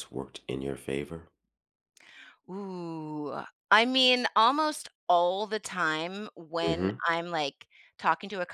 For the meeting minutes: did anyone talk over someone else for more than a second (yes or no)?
no